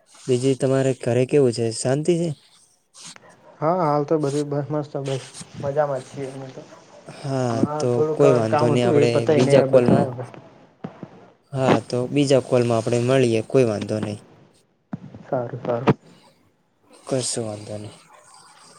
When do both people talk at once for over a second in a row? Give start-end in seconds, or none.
7.9-10.1